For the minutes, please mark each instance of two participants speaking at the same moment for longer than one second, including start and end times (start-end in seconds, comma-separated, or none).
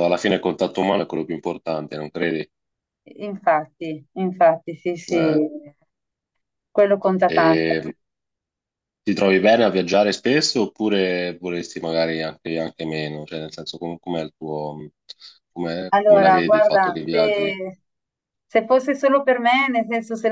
15.9-17.6